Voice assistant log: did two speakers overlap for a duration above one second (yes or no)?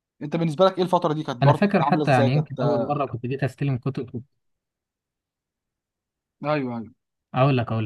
yes